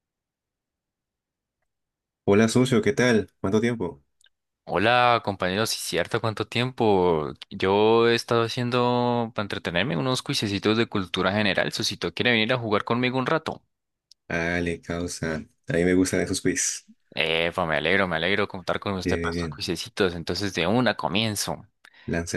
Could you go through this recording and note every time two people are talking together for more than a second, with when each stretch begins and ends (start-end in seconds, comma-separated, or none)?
none